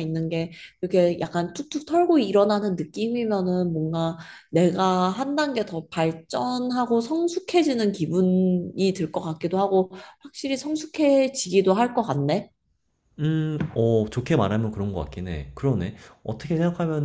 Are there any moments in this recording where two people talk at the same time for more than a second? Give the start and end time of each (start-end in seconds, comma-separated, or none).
none